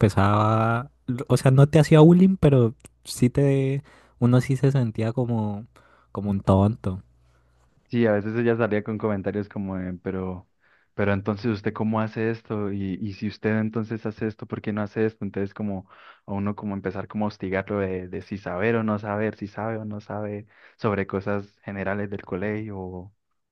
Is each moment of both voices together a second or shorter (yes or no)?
yes